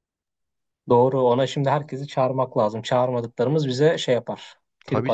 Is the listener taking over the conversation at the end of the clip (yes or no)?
yes